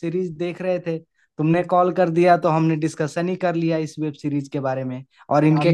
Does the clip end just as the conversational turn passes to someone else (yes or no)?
yes